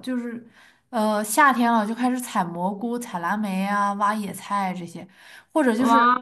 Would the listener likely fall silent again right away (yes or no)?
yes